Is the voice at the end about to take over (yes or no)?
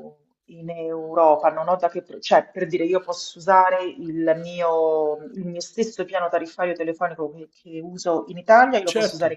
no